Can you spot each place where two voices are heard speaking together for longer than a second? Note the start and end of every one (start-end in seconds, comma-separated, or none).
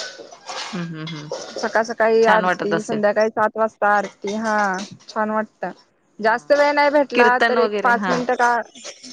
6.2-8.1